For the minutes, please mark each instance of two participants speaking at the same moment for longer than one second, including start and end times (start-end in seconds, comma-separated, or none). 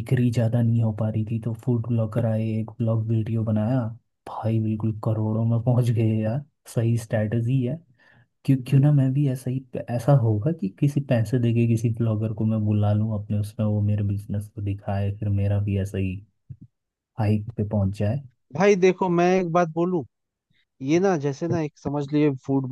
none